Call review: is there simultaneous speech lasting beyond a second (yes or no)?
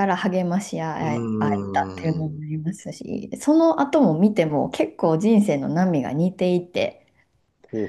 yes